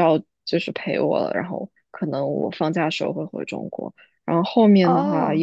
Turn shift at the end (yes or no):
no